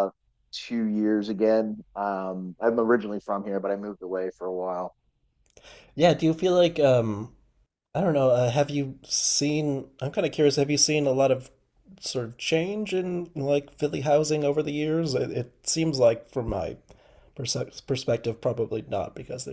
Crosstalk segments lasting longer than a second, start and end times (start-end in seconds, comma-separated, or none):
none